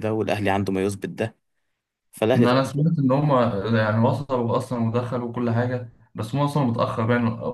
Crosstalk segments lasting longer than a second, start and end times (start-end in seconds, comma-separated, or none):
none